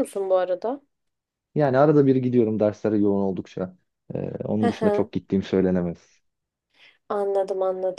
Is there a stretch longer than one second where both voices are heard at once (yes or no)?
no